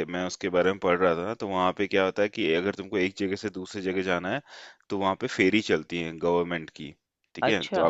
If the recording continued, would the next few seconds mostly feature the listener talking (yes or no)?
no